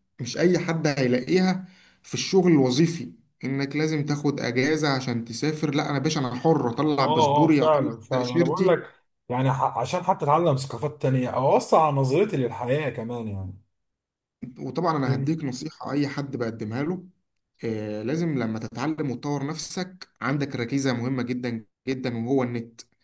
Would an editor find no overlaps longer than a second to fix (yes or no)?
no